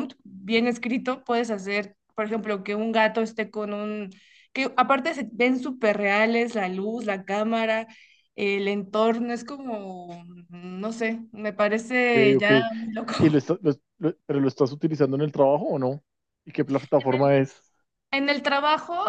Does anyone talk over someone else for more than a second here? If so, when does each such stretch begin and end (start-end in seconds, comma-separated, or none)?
none